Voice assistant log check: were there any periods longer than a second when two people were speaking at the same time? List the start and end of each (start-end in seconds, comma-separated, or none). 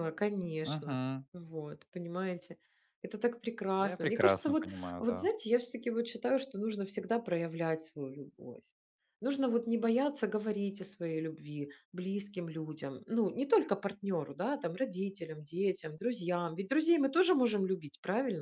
3.8-5.3